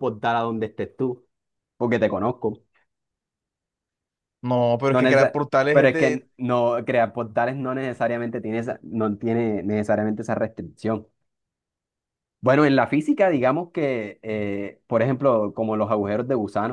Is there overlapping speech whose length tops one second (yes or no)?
yes